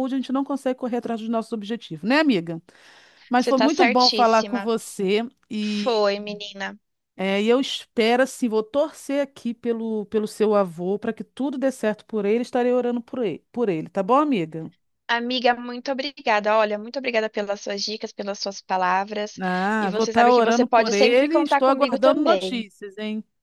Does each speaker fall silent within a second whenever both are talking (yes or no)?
no